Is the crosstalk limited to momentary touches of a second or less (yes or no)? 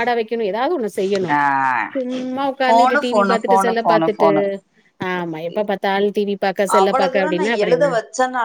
no